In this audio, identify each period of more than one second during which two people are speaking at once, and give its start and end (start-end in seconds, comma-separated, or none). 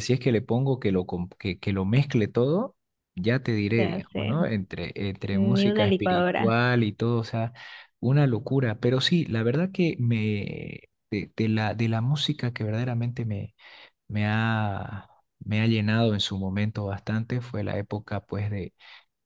5.3-6.6